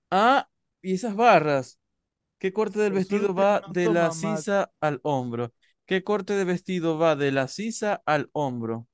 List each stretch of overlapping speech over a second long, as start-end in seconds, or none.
2.8-4.5